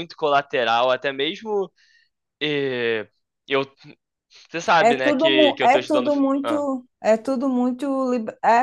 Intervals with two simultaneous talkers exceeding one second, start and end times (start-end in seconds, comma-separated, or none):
4.8-6.7